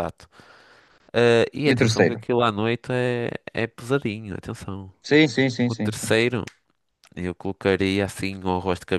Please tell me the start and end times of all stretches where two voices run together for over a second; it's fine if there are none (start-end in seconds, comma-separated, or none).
none